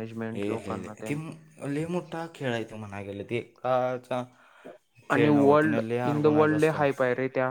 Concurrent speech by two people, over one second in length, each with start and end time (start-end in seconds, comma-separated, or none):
none